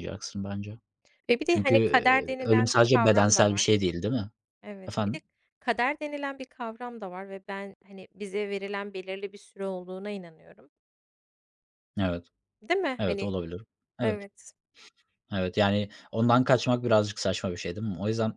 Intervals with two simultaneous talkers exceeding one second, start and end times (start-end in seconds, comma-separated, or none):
1.5-3.7